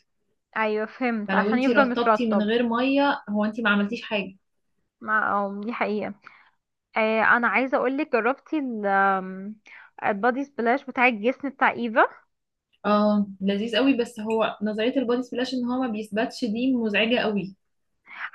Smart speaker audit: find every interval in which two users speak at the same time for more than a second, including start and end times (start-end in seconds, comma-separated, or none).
1.3-2.5